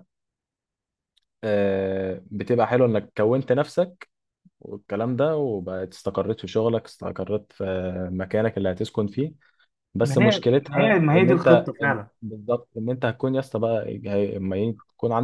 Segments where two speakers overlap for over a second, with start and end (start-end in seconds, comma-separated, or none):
10.0-12.1